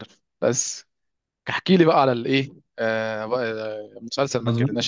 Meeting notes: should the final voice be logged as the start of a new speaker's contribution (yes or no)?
yes